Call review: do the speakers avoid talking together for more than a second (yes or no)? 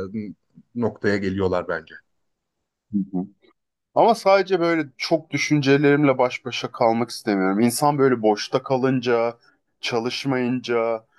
yes